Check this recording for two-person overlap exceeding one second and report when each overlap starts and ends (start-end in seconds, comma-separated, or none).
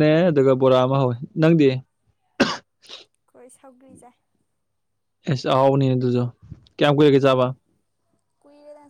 none